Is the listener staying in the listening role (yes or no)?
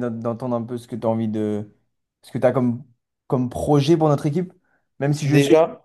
yes